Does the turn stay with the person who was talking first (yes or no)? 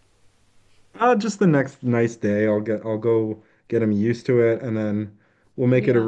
yes